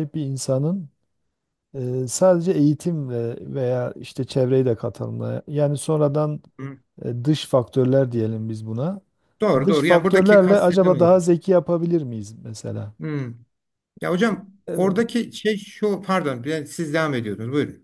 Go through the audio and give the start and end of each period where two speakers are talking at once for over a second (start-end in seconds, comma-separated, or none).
9.6-11.1